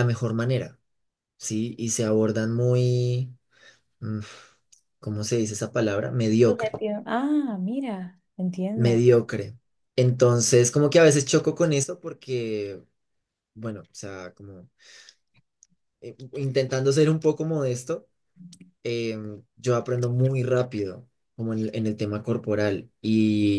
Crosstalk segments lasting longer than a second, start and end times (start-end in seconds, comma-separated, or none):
none